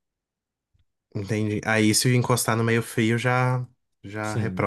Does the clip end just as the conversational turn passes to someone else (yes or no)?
yes